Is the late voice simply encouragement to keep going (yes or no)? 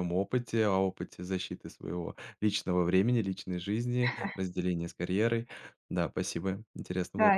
no